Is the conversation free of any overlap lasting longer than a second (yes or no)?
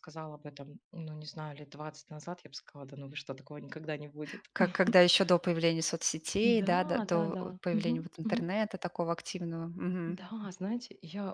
no